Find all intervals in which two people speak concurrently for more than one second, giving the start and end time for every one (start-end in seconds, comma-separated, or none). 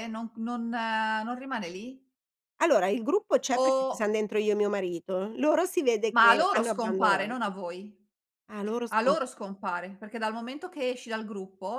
6.1-7.5